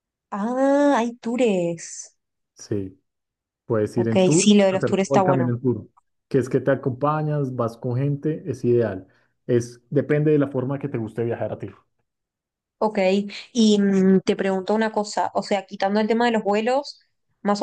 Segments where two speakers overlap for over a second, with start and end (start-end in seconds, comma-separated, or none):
3.9-5.5